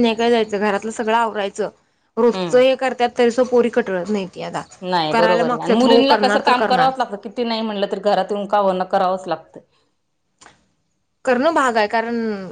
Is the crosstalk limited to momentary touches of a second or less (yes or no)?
no